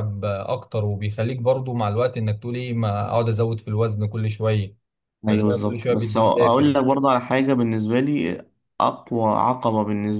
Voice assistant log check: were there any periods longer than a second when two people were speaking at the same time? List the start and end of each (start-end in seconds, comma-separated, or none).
5.3-6.7